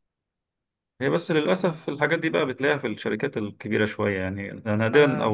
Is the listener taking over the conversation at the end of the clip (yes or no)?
no